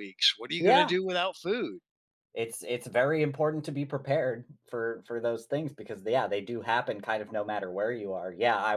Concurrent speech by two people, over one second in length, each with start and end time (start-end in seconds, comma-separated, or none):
none